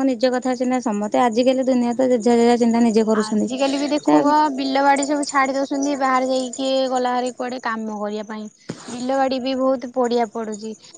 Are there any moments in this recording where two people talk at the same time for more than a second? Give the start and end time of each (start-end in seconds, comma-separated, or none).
none